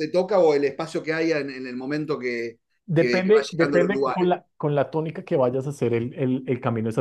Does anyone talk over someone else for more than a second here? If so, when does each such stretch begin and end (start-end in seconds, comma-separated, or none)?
2.9-4.3